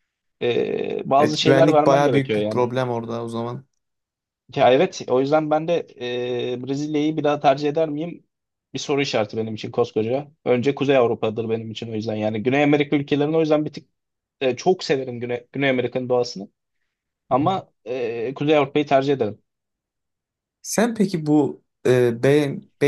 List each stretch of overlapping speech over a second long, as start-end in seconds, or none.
1.2-2.7